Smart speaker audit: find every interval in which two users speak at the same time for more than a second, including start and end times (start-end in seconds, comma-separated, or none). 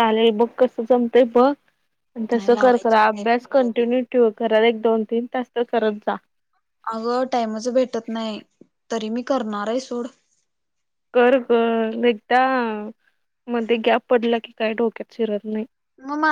2.3-3.9